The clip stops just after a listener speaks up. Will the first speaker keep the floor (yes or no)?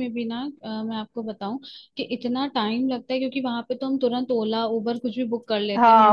no